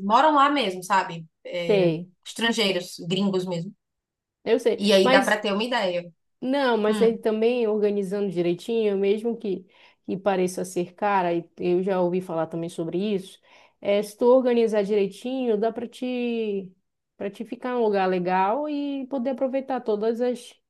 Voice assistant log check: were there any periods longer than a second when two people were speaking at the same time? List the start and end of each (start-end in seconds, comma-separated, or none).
none